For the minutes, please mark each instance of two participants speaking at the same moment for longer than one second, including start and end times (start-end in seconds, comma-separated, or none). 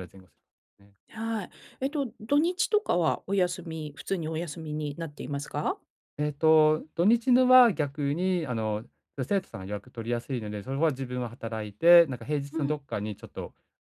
none